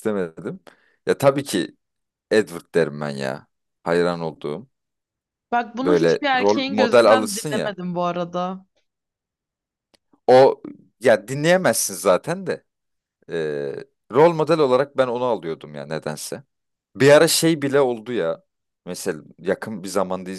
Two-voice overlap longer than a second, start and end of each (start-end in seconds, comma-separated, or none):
5.8-7.8